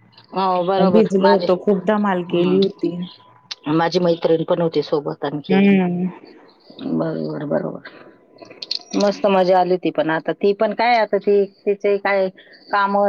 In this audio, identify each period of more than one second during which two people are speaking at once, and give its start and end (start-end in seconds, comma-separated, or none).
0.9-2.6